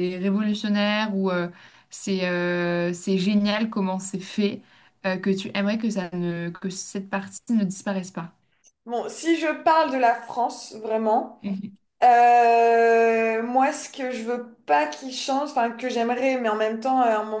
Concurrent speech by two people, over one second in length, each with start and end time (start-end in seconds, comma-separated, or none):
none